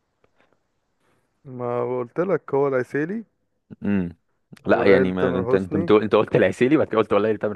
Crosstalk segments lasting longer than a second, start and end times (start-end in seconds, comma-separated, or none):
4.7-5.9